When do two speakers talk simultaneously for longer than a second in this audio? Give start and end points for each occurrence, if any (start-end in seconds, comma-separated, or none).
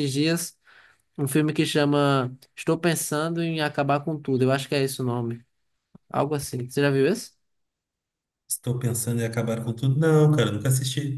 none